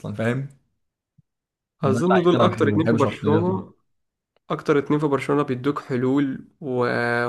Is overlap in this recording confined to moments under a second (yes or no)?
no